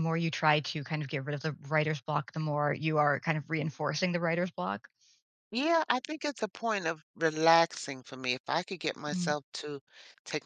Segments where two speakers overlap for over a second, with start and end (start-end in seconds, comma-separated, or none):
none